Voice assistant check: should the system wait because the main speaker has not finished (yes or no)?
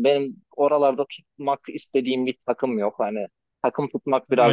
no